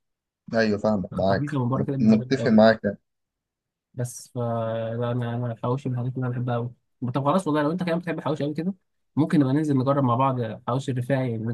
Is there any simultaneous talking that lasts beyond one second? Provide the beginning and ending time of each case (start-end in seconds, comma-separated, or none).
1.1-2.5